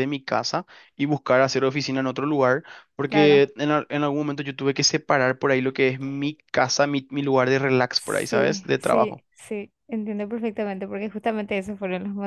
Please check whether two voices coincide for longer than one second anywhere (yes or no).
yes